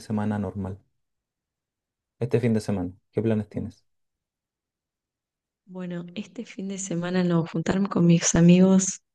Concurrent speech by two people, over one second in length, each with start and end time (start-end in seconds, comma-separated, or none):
none